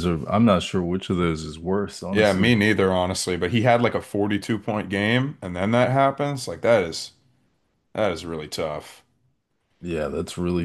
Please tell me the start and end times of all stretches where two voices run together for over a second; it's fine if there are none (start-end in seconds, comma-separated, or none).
none